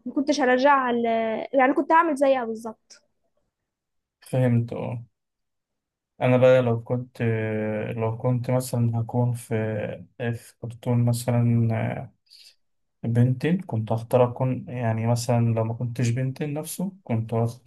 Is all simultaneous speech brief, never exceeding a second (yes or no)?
yes